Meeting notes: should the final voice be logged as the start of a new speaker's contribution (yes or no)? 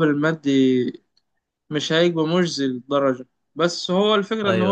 no